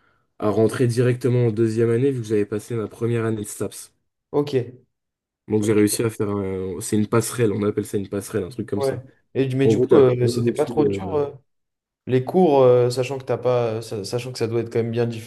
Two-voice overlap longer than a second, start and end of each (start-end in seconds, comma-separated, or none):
9.6-11.2